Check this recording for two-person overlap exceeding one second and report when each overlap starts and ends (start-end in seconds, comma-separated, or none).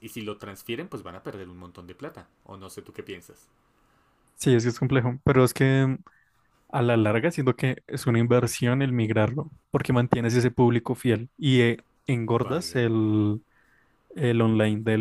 none